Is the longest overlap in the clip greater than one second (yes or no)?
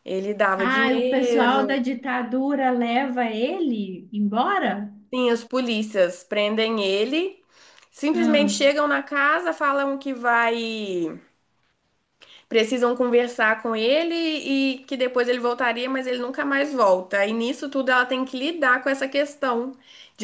yes